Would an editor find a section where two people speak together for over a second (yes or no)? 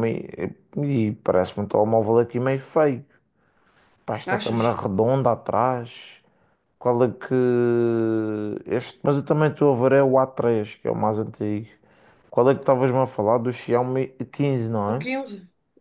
no